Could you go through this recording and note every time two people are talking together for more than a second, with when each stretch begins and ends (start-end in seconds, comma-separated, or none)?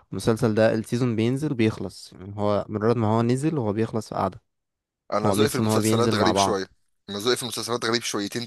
5.2-6.7